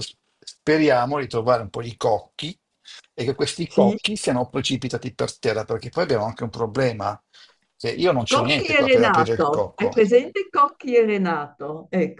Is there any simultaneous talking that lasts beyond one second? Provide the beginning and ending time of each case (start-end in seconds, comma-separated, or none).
8.3-10.1